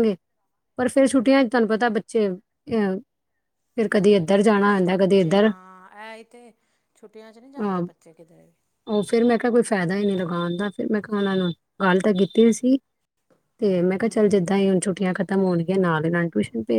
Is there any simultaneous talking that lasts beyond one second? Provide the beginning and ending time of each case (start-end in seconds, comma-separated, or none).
none